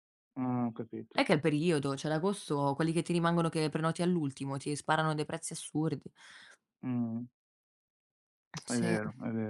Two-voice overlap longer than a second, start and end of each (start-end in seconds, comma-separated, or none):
none